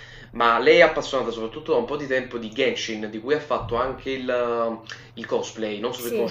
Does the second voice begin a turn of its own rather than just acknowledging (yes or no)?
yes